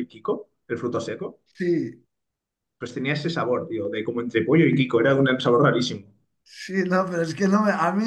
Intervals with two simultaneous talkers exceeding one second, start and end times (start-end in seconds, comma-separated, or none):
none